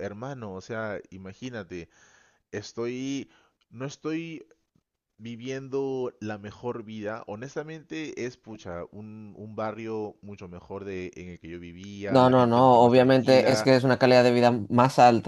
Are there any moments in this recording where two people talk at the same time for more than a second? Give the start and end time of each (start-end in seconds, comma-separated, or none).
12.1-13.7